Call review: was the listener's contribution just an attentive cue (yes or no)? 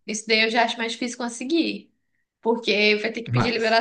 yes